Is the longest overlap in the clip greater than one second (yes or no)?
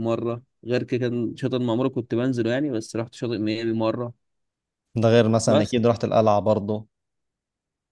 no